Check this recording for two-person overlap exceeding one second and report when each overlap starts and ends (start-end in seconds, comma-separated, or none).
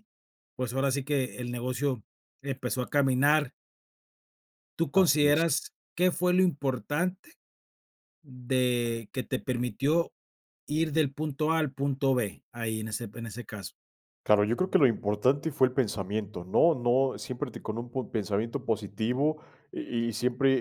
none